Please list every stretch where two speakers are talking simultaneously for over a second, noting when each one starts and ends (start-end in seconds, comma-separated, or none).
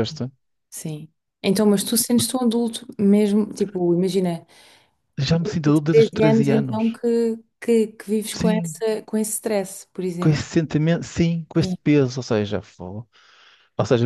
5.3-7.0